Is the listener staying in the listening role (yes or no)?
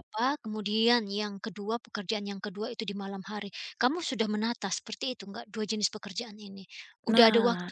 no